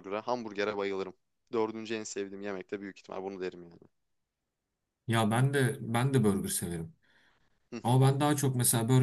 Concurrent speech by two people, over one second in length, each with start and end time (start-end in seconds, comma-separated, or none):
none